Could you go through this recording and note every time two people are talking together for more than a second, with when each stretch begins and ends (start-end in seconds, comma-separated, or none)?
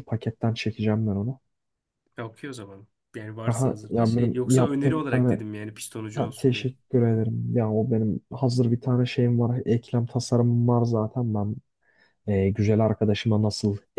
3.5-5.4